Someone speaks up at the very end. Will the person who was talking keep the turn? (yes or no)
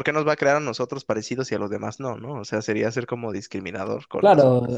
no